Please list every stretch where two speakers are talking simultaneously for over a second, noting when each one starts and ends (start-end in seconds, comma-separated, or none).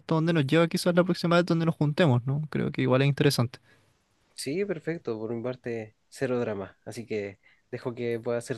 none